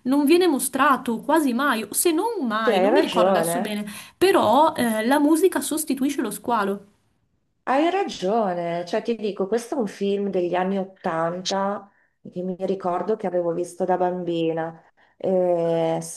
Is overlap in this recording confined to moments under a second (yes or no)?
no